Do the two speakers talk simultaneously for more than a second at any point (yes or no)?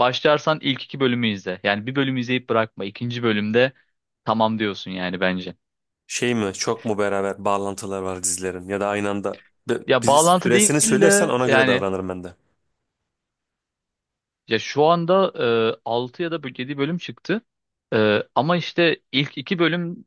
yes